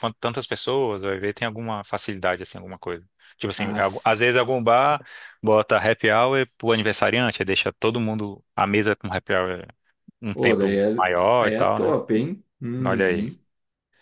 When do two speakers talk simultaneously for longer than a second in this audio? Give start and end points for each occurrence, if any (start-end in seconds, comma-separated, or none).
10.3-11.9